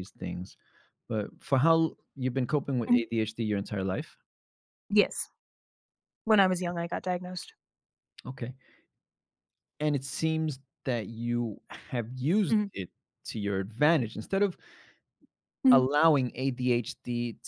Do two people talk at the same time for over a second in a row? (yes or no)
no